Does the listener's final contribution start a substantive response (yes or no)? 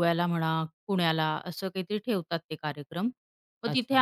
no